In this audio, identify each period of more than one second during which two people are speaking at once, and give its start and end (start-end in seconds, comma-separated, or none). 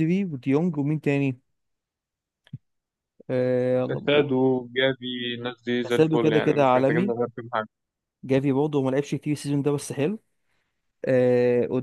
5.8-7.1